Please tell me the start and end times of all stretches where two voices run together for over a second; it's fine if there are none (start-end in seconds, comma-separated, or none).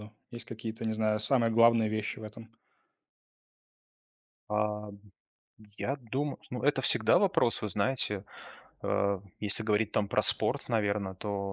none